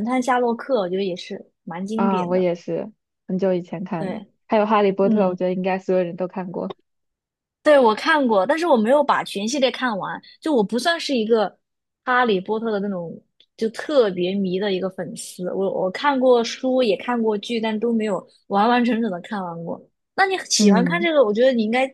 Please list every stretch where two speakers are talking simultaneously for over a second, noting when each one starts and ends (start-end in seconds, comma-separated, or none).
none